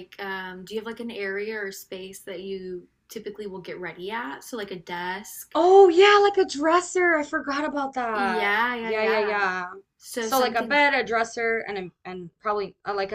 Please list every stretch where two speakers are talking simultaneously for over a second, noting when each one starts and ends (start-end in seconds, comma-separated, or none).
8.1-9.4